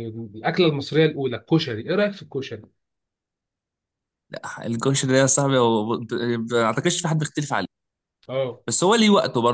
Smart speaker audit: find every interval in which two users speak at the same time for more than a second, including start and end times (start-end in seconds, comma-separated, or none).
none